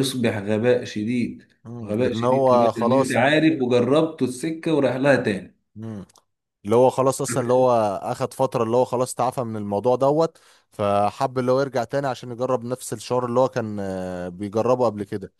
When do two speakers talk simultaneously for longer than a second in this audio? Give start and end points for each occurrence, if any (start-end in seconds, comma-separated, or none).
1.8-3.4